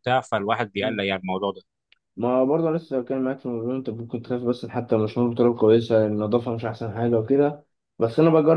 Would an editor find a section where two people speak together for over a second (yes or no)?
no